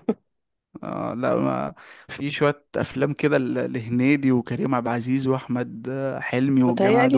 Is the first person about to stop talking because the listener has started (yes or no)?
yes